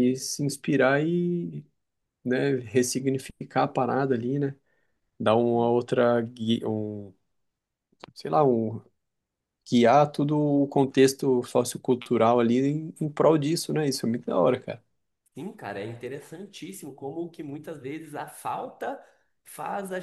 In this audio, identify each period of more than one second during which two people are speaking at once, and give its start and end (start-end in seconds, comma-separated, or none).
none